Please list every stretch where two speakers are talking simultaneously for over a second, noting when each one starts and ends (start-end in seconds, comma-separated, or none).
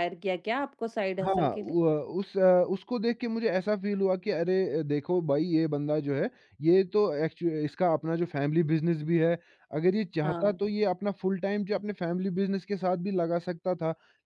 none